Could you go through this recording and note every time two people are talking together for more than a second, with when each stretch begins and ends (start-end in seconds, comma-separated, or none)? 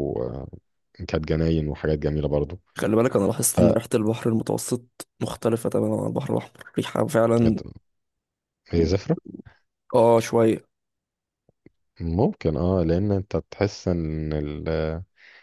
none